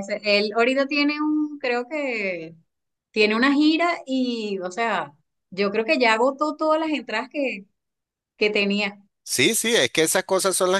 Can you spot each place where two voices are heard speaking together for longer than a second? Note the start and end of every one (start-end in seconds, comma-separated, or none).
none